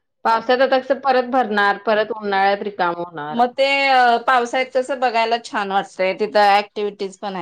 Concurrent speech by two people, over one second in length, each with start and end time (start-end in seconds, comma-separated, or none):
none